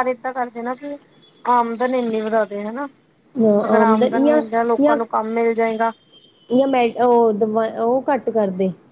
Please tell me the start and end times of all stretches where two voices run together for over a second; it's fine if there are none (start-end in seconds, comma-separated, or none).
none